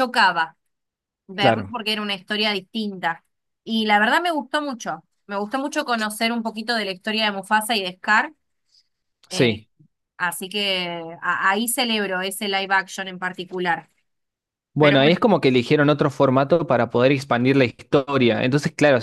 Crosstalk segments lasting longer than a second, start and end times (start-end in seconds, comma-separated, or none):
none